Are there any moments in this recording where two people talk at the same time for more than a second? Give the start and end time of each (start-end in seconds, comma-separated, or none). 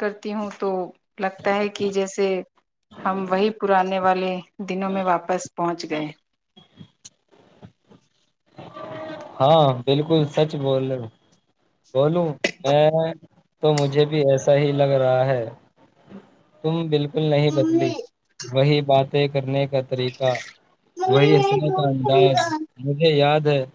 21.1-22.6